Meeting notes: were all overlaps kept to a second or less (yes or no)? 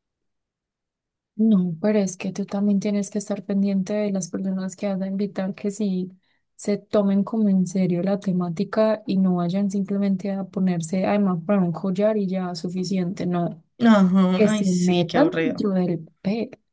no